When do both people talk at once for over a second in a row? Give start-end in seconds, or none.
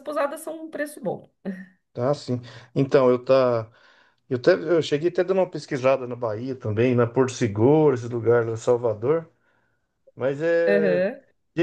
none